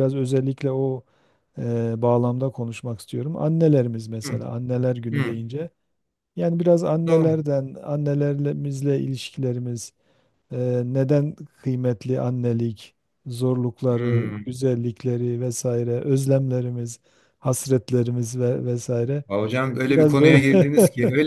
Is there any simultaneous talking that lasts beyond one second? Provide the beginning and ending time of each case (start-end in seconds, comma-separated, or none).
none